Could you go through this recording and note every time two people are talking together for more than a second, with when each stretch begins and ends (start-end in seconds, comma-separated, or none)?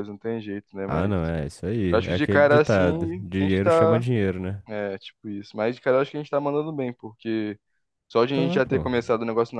1.9-4.0